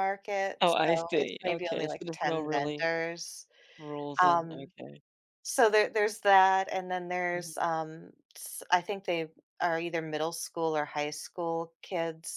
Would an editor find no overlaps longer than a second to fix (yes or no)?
no